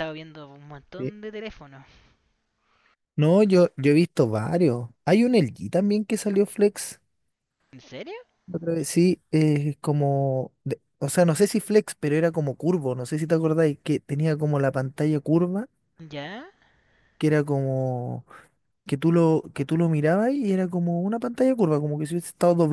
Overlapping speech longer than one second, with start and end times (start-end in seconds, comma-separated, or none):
none